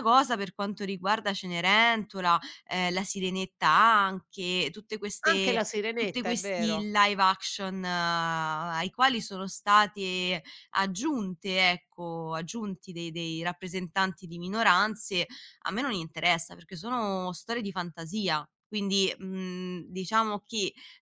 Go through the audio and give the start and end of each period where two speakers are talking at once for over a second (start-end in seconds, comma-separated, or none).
5.3-6.9